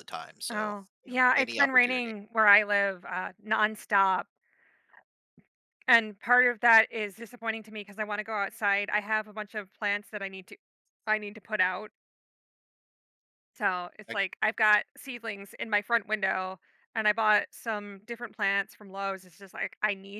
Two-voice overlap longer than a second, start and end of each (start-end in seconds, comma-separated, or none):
0.5-2.1